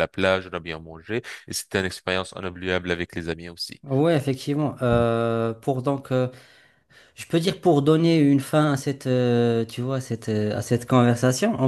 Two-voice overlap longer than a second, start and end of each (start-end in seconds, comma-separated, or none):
none